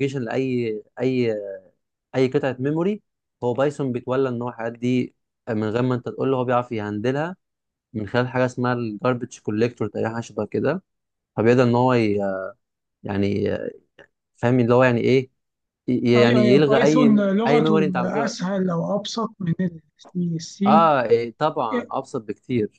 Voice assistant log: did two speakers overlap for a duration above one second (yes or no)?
yes